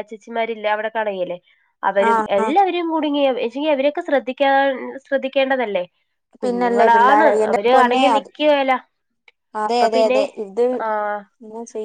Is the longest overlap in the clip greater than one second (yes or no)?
yes